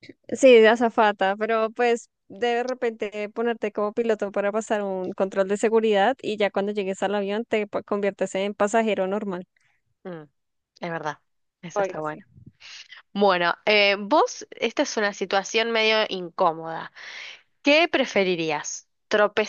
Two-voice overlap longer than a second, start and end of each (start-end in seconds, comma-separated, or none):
none